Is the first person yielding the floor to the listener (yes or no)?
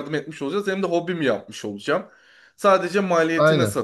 no